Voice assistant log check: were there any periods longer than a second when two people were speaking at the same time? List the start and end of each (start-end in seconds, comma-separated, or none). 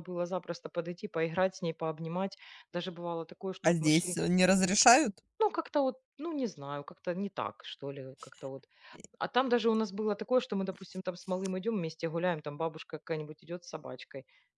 none